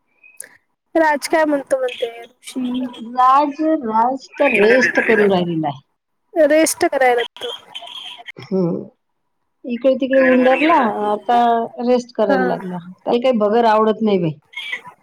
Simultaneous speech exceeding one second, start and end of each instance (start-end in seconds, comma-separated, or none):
none